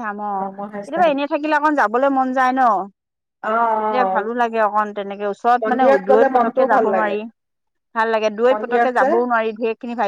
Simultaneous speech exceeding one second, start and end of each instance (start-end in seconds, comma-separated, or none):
5.6-7.2